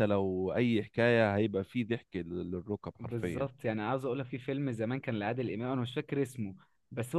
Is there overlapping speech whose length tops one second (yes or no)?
no